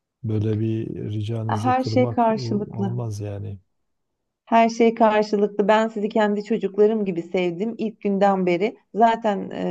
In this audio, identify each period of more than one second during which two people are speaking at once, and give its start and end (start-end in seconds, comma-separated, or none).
1.5-3.0